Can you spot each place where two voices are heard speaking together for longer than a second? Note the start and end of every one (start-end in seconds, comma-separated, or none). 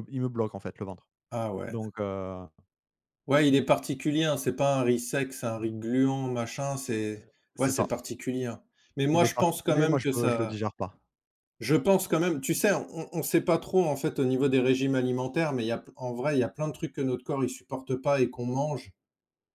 9.1-10.6